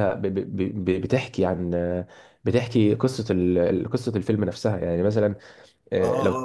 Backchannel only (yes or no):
no